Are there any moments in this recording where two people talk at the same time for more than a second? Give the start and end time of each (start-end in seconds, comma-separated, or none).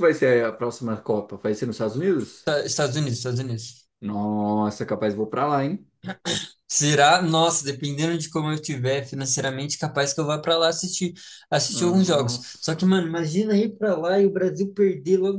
11.7-13.0